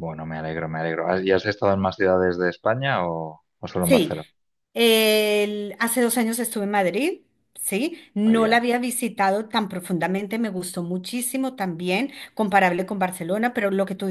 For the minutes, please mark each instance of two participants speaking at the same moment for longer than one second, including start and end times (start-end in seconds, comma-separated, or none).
none